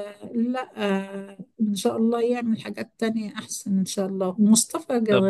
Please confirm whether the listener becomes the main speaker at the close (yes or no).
no